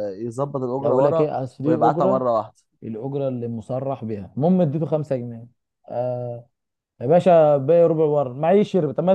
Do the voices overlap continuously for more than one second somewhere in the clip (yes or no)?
yes